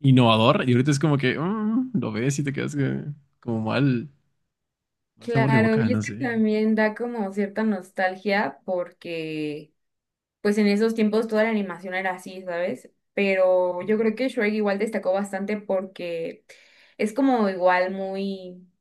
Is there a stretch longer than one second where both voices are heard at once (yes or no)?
yes